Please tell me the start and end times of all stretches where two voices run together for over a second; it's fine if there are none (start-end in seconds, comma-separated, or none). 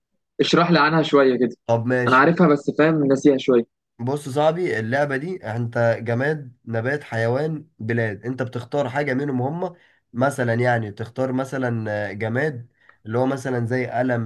none